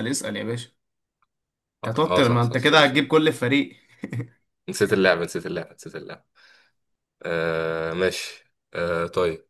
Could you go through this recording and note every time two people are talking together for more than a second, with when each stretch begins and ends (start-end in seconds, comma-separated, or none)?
1.8-3.1